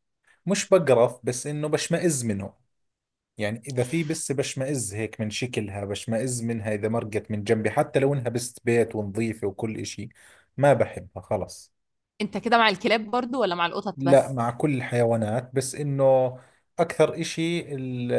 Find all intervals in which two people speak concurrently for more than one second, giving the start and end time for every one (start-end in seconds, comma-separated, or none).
none